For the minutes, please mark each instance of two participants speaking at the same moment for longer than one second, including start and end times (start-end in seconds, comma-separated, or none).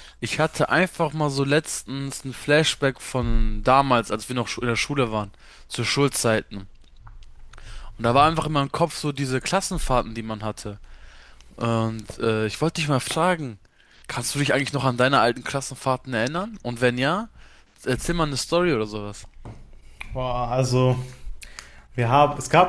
none